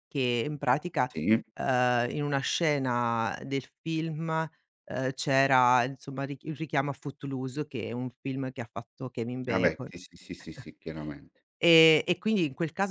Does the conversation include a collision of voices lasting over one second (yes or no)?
no